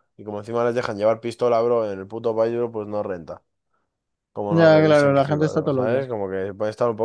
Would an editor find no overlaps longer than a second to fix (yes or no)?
no